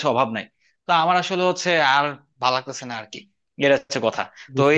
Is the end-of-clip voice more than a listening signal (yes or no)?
no